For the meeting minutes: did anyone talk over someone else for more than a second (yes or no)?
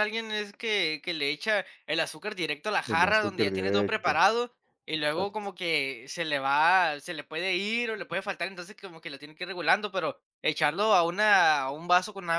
yes